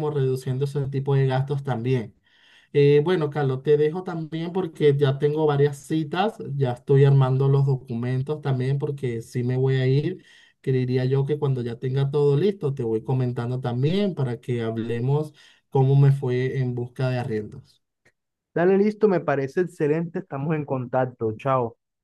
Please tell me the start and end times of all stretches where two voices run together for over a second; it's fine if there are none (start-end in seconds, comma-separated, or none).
none